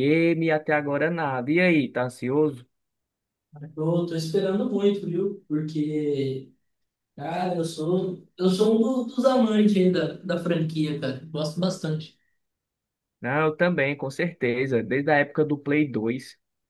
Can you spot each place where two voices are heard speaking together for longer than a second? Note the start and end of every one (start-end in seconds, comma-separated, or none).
none